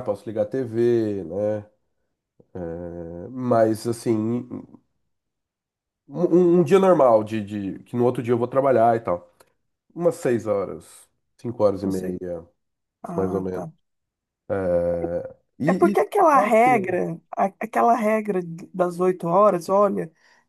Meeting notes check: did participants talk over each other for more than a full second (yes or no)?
yes